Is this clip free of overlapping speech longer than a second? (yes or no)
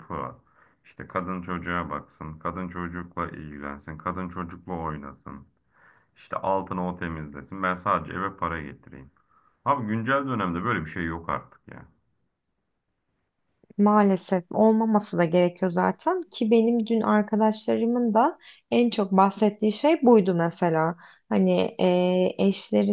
yes